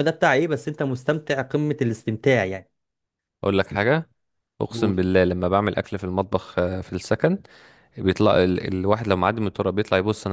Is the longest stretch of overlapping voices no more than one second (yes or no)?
yes